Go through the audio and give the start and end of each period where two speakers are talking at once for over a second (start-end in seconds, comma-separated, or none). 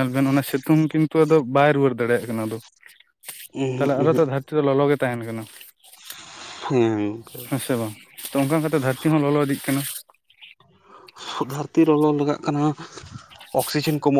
none